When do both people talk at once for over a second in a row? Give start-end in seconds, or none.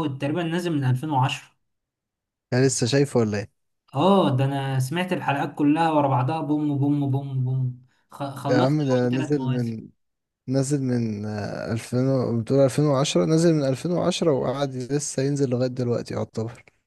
8.5-9.8